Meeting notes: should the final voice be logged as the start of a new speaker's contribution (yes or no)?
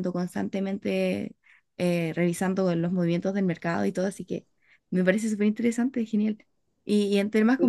no